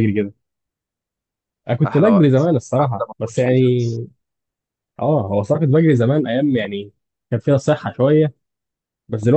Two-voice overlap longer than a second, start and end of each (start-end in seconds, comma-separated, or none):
1.9-3.9